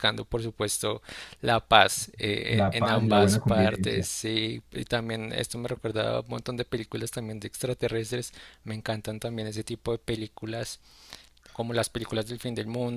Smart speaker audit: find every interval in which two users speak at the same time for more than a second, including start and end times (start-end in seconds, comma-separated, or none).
2.5-4.1